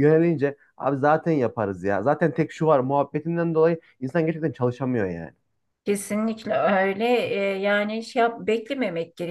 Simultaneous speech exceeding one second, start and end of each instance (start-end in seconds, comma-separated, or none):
none